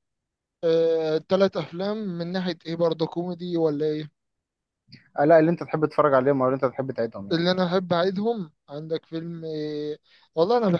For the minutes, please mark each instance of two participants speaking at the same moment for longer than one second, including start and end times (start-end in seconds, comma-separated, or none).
none